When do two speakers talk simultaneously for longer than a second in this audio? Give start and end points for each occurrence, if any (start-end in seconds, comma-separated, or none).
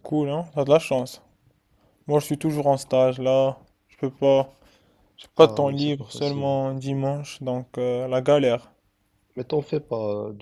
5.4-6.6